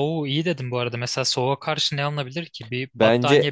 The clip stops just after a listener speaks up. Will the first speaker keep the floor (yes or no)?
no